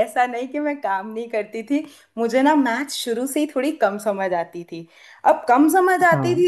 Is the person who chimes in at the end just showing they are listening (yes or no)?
yes